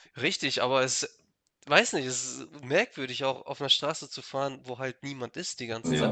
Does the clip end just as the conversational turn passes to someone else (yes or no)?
yes